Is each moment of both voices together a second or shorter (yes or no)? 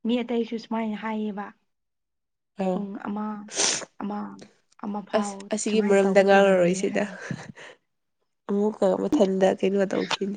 no